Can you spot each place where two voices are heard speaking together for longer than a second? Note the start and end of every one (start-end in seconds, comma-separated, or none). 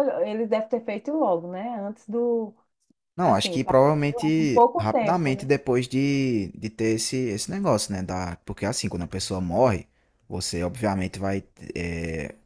3.2-5.5